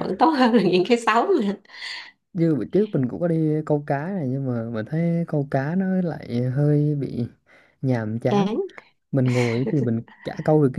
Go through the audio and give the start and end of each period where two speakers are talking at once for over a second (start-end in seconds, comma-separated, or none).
none